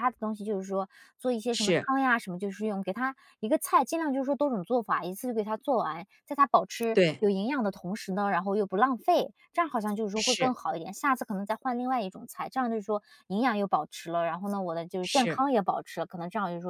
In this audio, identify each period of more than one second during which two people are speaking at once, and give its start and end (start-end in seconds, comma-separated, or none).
none